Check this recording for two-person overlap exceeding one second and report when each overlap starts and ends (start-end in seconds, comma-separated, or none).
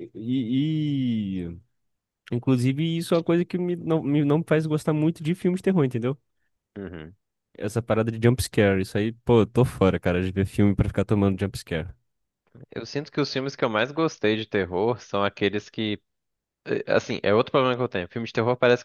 none